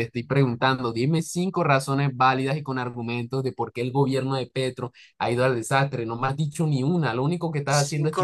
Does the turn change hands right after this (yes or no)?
yes